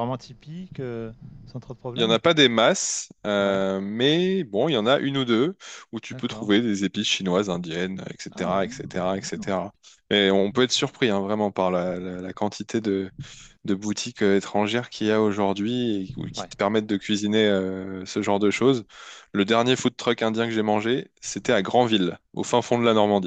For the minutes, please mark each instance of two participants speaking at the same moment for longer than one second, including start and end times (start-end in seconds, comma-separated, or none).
8.3-9.5